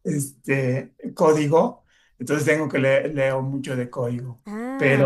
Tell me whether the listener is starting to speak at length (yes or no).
no